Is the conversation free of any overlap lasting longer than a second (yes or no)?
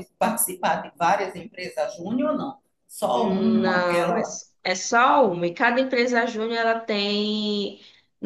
no